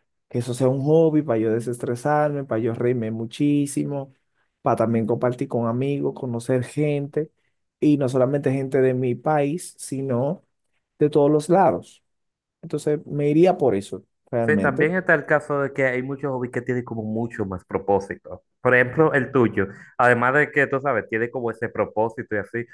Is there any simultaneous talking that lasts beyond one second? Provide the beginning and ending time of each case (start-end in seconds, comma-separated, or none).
none